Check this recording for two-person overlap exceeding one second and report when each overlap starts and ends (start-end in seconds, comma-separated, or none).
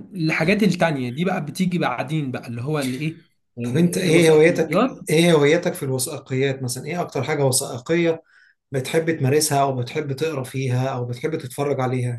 3.6-5.0